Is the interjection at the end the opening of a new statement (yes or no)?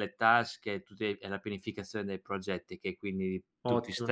no